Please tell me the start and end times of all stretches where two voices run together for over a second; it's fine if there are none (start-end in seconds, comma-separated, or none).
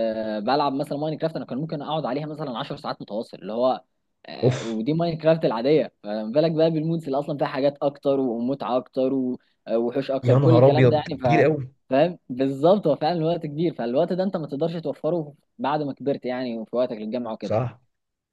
10.2-11.4